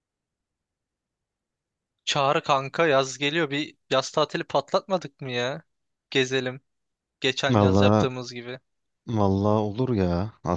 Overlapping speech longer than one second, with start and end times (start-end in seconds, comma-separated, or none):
none